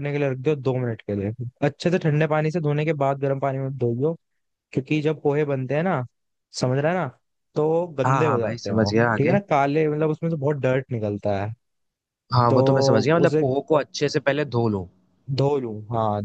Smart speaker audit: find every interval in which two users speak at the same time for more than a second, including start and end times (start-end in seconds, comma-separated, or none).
8.1-9.4